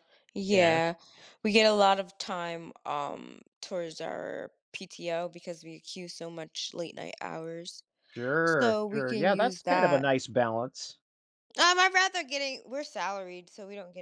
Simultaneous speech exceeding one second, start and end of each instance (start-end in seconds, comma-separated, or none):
8.4-10.1